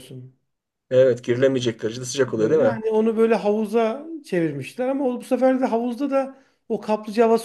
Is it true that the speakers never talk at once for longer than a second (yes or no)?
yes